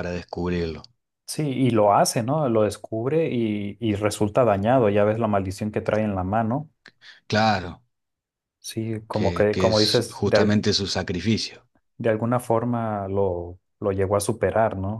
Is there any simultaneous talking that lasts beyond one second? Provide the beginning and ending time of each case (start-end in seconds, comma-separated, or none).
9.1-10.6